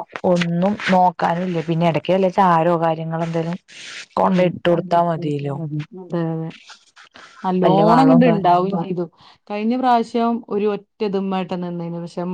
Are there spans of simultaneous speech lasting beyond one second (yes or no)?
no